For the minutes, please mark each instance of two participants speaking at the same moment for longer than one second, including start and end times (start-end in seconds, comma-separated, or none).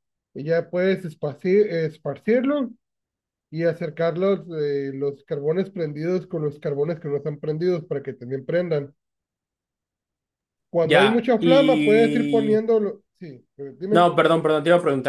10.8-12.6